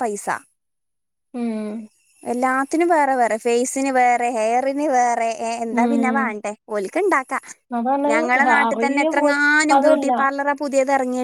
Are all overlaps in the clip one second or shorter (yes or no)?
no